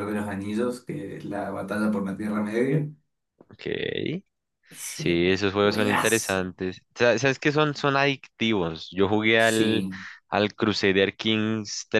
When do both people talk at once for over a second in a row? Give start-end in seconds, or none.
4.9-6.5